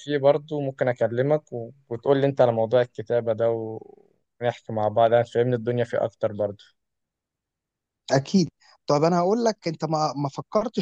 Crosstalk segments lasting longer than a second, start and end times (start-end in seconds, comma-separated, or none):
none